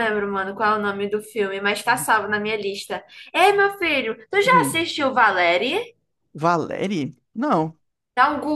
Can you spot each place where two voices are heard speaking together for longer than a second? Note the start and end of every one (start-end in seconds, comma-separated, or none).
none